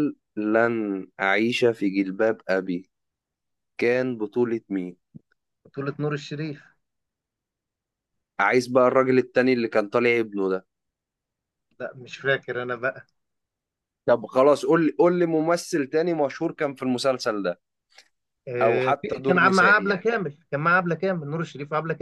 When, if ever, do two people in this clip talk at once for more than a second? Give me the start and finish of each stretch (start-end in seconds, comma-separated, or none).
18.6-20.1